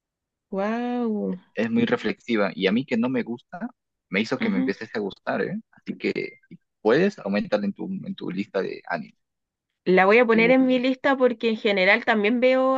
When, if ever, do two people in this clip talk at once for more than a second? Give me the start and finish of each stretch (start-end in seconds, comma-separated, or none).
none